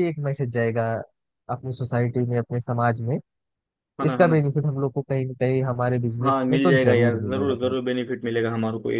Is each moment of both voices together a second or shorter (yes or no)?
no